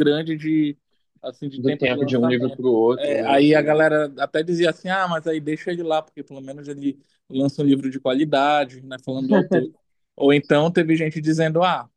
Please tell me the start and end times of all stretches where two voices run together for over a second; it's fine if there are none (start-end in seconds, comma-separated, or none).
1.6-3.4